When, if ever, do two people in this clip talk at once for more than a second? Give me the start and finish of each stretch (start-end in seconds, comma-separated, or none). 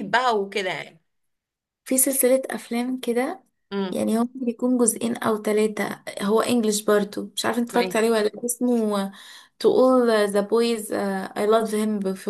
none